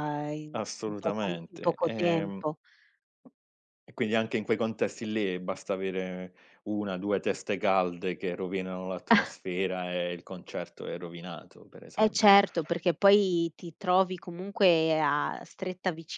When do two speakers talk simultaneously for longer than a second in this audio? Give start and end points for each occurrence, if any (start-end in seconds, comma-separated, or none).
0.5-2.4